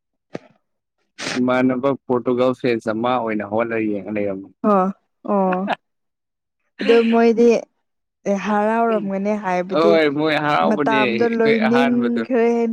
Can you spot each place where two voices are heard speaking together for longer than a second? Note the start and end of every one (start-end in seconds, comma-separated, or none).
10.7-12.2